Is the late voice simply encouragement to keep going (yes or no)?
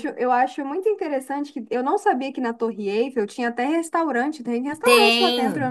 no